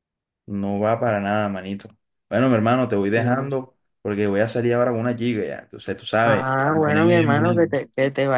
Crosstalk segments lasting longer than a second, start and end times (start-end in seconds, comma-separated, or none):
6.2-7.7